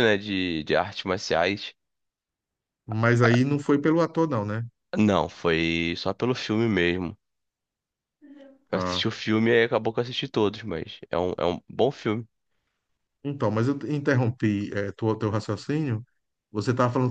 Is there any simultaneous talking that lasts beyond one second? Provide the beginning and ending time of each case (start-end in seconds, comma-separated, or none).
none